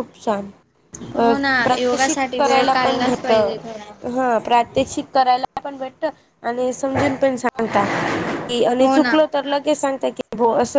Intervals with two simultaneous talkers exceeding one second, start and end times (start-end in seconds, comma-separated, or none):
1.2-3.3